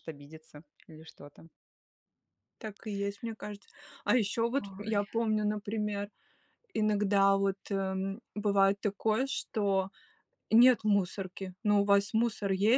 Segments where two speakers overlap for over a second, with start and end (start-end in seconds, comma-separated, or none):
none